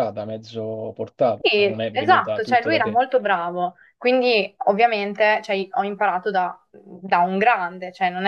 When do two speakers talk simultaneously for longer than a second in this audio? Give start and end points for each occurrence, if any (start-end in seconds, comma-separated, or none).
1.4-3.0